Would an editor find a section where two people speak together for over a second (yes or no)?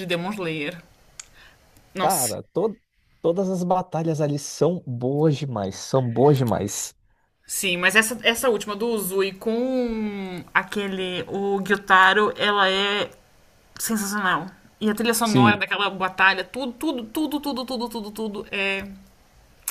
no